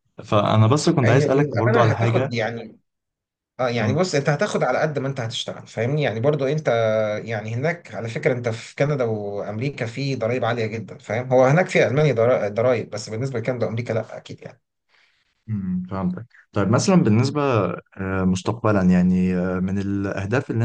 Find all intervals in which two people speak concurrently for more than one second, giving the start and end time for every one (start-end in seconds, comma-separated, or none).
1.0-2.3